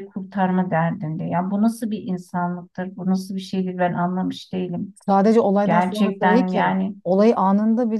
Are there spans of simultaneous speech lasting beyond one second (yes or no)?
yes